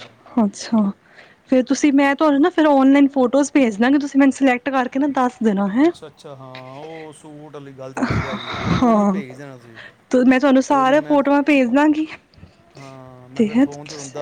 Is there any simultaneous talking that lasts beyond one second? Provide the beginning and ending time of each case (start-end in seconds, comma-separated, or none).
none